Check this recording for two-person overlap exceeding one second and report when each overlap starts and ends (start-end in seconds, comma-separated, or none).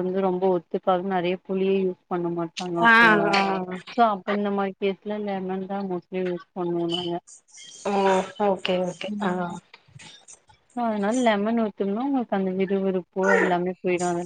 none